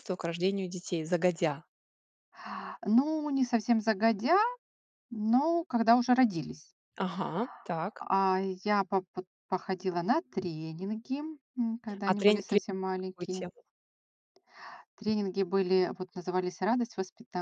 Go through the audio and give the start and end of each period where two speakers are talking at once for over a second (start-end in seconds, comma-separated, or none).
12.1-13.4